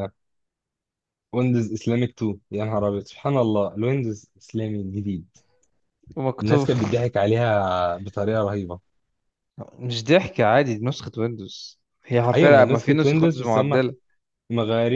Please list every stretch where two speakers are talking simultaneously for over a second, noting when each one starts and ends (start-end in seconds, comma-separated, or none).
12.3-13.8